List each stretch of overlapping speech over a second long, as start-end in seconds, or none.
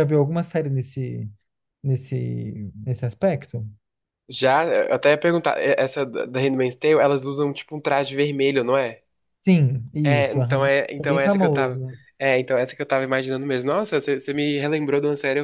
10.0-11.8